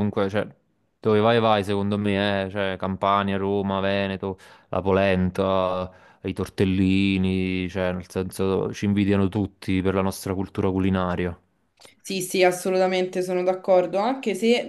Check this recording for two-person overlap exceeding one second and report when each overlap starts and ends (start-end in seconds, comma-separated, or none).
none